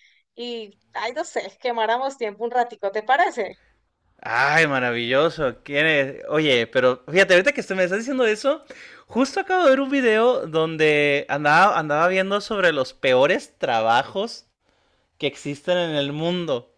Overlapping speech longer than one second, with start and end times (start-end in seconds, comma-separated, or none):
none